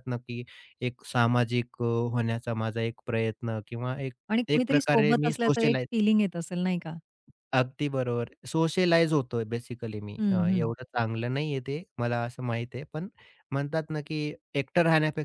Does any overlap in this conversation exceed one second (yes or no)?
yes